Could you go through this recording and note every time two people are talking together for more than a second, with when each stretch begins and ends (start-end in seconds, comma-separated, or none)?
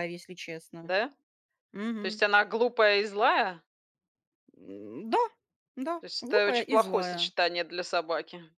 6.0-7.3